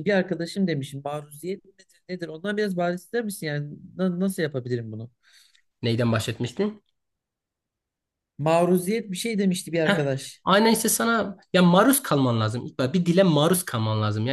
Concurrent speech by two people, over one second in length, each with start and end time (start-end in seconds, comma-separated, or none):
none